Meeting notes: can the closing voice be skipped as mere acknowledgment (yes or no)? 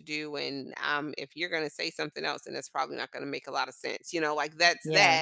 yes